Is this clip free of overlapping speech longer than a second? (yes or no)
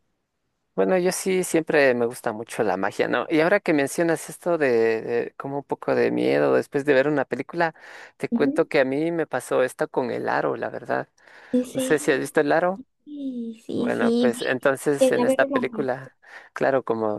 no